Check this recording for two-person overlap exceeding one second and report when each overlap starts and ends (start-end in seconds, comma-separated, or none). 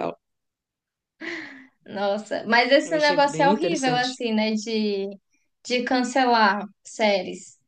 2.8-4.2